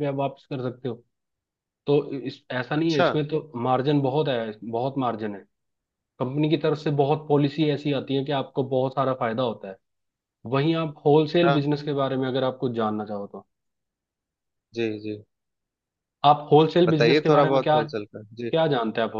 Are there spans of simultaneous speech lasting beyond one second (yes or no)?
yes